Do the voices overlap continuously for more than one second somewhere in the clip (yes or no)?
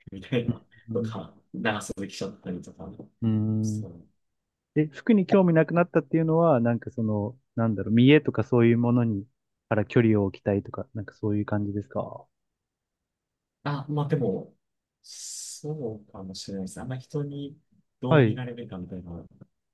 no